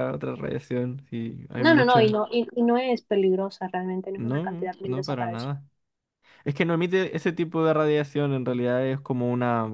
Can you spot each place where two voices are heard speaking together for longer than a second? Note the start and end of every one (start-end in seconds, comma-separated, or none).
4.1-5.4